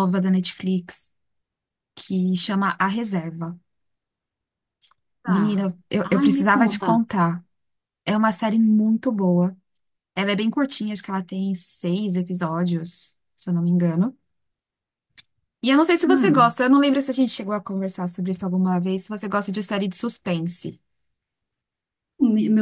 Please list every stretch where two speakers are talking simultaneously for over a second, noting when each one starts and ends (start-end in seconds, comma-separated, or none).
5.3-7.0